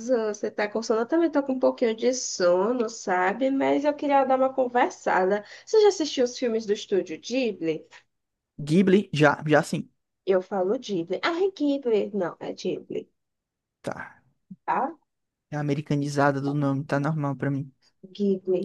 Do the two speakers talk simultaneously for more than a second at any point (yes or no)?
no